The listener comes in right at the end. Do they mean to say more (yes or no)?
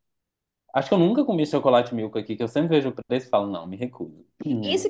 yes